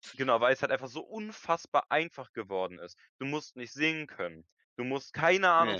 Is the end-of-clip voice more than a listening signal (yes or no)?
no